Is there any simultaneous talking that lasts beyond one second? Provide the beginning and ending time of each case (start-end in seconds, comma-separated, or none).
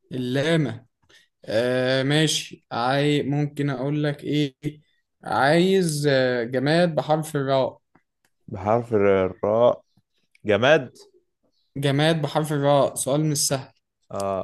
none